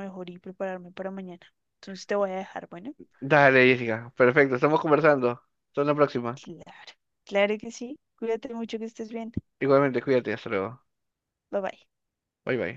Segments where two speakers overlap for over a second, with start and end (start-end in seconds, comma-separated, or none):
none